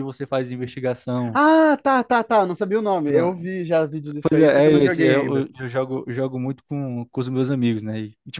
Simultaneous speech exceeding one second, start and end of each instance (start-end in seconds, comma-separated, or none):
4.2-5.5